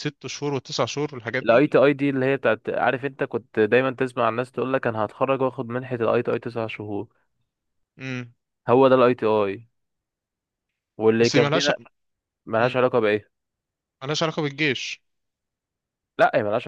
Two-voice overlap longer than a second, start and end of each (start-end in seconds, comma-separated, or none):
none